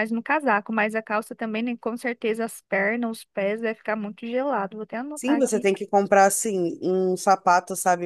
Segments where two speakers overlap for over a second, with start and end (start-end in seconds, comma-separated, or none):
none